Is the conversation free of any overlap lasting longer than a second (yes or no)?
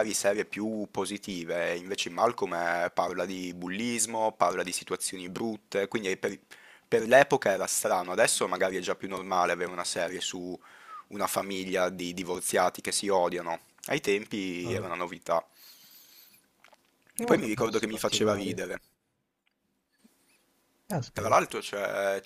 no